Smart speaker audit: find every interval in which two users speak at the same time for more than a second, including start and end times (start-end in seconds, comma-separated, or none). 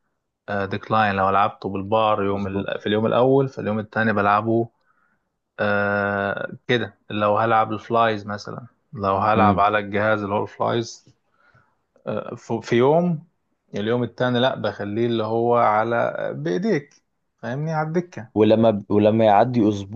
none